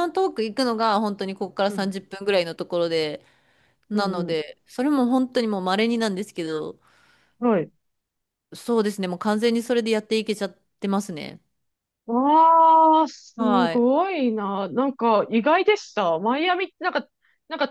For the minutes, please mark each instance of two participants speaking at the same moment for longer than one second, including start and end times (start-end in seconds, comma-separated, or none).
none